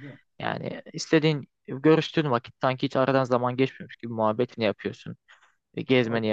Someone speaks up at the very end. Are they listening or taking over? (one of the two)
listening